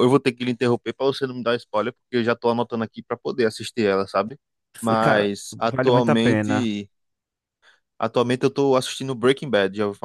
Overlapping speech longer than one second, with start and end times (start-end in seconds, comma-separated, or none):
5.0-6.7